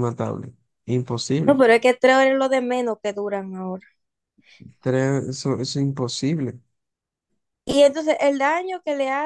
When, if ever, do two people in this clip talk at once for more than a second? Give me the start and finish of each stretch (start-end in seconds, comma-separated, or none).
none